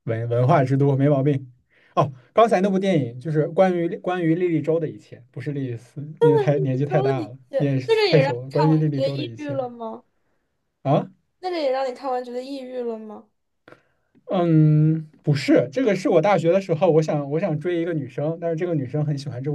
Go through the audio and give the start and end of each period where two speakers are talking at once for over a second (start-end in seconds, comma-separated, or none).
6.9-9.6